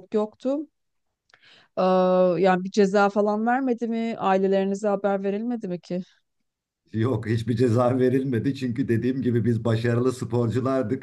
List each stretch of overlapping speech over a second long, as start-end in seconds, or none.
none